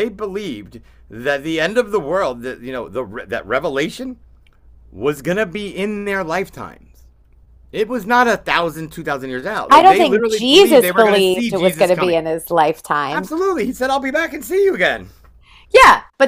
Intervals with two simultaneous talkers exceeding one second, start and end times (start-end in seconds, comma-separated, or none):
9.7-12.2